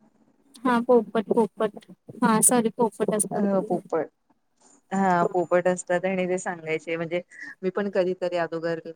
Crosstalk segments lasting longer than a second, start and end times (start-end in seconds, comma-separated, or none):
none